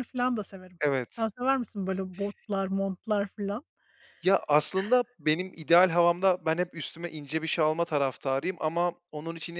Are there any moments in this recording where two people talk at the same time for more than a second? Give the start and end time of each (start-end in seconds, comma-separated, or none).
none